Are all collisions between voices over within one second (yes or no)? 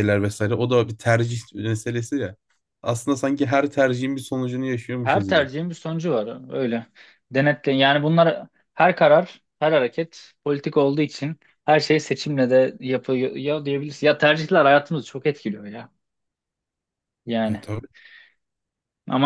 yes